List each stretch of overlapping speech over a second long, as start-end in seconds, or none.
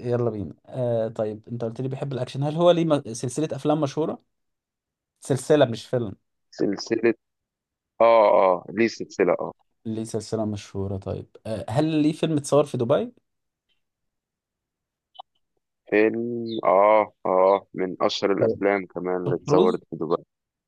none